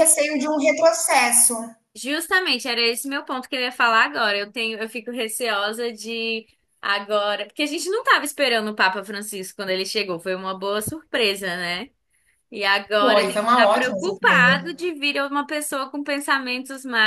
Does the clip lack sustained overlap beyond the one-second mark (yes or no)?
no